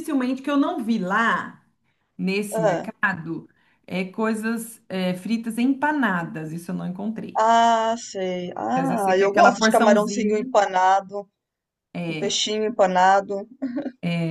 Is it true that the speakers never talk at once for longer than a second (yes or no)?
no